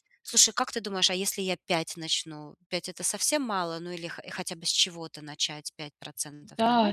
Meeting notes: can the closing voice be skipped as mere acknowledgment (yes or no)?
no